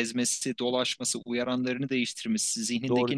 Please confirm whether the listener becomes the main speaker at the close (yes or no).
no